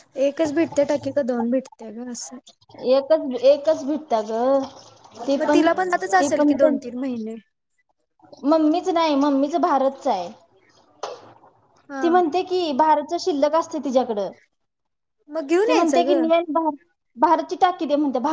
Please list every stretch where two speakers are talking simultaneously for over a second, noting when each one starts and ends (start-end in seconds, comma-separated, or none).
none